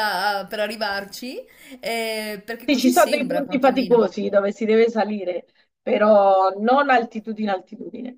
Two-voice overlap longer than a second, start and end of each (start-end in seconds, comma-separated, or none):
2.6-4.1